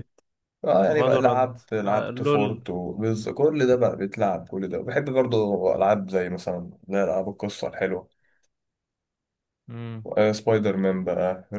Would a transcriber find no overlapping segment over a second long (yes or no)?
no